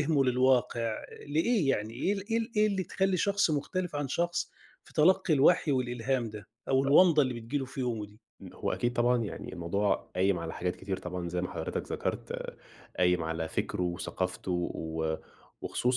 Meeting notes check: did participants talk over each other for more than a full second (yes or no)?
no